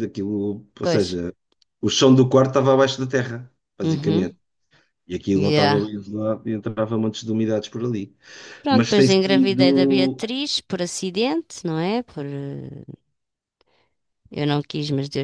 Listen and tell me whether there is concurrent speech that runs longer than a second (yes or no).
yes